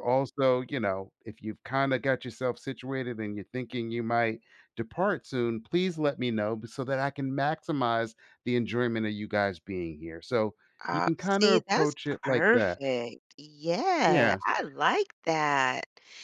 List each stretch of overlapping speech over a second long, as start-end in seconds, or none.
10.9-12.8